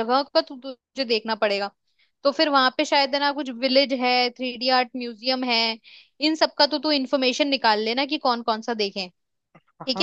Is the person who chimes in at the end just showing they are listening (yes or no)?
no